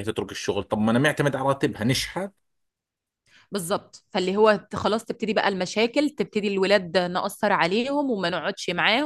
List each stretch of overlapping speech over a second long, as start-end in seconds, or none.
none